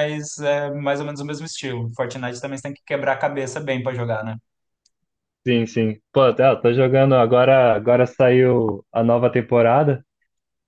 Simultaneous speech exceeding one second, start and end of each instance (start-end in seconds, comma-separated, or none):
none